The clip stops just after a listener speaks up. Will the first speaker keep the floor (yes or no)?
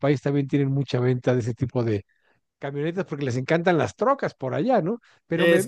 yes